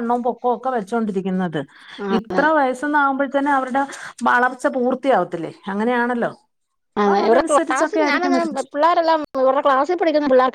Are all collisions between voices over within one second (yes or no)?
no